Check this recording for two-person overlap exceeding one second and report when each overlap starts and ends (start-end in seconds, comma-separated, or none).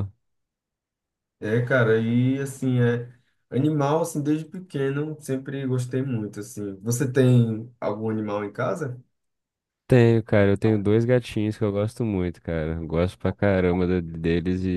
none